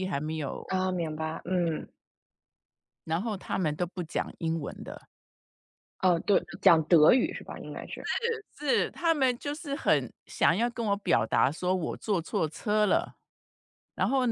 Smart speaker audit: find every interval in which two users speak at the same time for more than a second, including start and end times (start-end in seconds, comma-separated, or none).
none